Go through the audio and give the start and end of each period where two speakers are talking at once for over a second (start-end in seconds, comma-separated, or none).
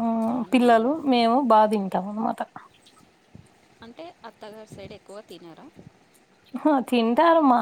none